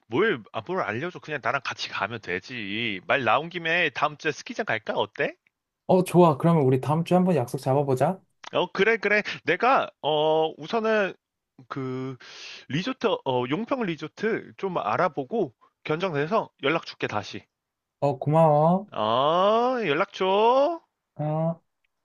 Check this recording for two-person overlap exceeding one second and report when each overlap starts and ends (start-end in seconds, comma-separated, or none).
none